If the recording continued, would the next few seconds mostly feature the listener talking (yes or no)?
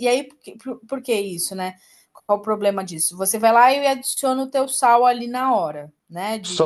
yes